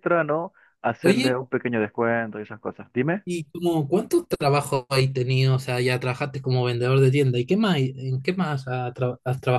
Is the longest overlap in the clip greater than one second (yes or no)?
no